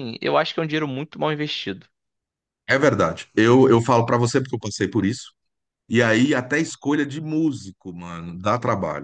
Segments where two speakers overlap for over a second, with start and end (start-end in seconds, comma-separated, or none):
none